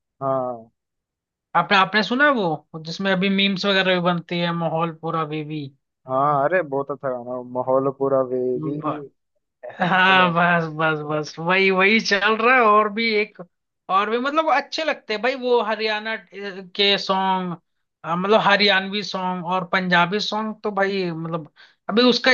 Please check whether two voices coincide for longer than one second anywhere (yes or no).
no